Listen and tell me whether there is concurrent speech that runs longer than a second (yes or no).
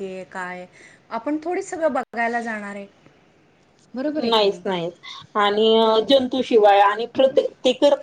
no